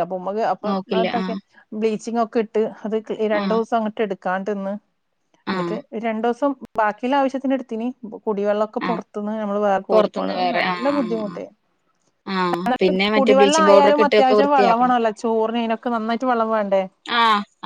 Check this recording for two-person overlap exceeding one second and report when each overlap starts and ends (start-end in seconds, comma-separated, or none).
9.9-11.4, 13.2-15.0